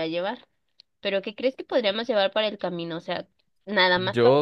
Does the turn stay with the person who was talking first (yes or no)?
no